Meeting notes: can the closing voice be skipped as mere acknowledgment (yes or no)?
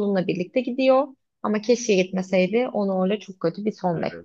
no